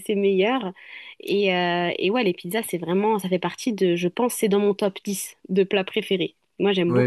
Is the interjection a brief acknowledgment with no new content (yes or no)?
no